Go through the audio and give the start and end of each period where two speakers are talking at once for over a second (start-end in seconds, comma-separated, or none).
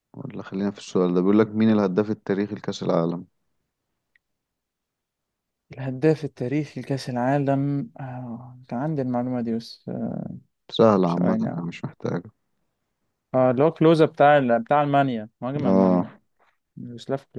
none